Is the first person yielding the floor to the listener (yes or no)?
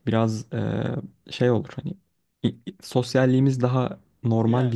no